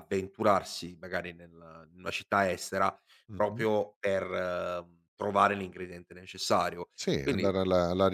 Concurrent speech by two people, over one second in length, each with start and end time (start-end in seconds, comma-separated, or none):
none